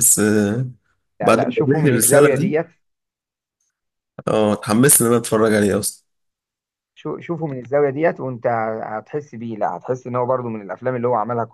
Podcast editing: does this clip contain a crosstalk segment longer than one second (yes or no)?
yes